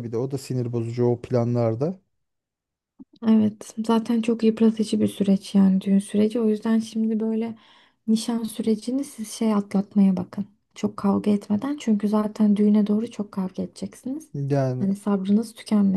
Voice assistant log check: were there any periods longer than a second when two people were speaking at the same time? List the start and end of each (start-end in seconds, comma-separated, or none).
none